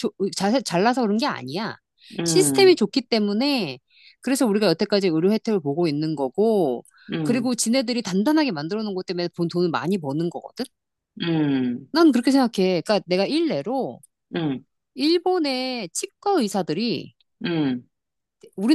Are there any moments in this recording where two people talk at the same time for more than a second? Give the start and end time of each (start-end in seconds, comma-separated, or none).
none